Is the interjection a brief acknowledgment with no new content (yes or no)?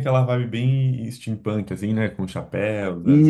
no